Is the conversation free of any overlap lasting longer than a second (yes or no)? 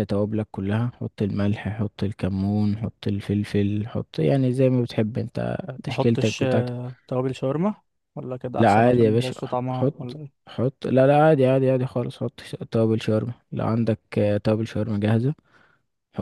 no